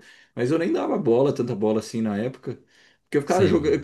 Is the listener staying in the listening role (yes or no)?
yes